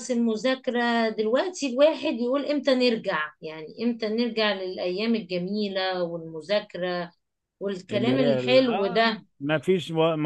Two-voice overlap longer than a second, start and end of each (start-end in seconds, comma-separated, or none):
7.9-9.3